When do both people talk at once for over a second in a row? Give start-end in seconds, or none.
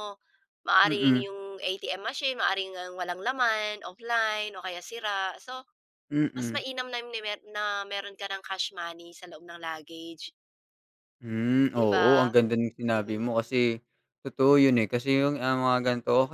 none